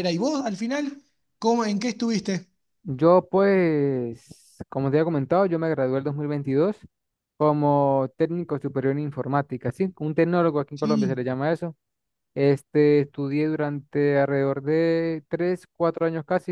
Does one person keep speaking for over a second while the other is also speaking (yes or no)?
no